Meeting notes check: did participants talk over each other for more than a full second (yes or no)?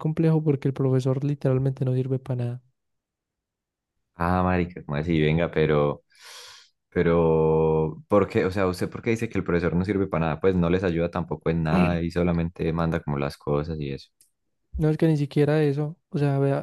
no